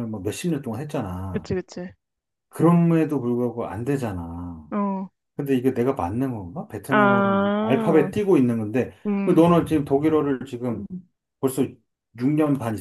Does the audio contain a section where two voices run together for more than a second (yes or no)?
yes